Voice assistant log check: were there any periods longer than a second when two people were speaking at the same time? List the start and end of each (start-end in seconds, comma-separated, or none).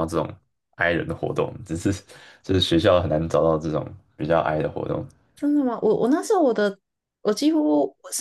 none